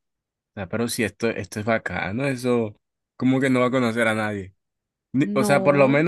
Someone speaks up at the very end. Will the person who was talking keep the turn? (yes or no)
yes